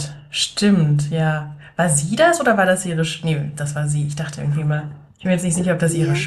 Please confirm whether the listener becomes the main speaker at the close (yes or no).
no